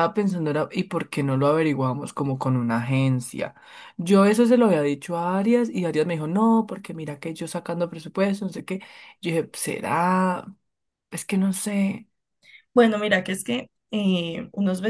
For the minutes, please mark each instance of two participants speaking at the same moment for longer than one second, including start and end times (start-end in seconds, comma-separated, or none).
none